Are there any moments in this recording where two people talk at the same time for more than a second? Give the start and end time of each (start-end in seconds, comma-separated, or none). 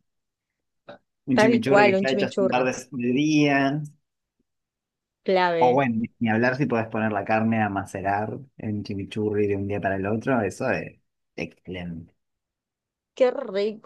1.3-2.7